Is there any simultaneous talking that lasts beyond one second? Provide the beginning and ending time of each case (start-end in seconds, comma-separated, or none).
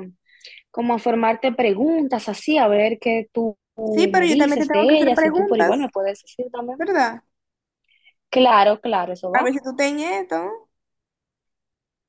4.1-5.8